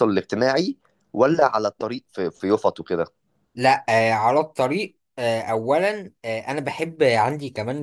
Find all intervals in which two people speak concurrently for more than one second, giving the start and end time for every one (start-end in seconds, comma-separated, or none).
none